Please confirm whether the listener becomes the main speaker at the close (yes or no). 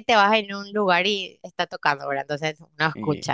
no